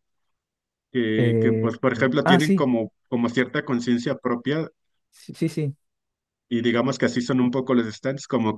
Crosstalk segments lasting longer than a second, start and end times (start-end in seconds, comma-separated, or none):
1.2-2.7